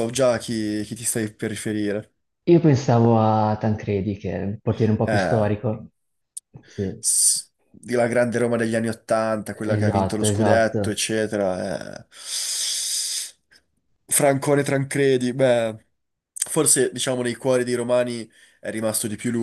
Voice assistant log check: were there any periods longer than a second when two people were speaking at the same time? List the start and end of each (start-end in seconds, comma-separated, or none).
9.8-11.0